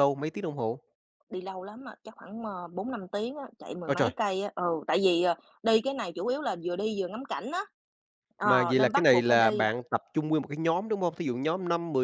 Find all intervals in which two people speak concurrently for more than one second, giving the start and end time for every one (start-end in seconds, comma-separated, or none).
8.4-9.7